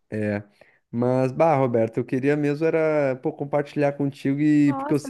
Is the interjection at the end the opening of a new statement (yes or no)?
yes